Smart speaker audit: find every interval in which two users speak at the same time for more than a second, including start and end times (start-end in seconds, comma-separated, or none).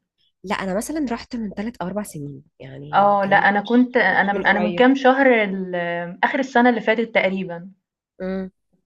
2.9-4.9